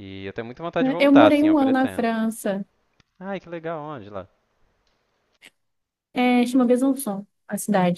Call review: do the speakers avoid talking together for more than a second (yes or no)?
no